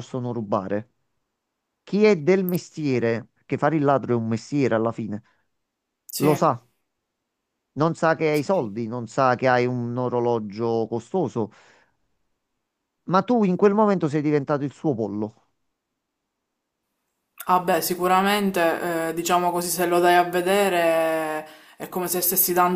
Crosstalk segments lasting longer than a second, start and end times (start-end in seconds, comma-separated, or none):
none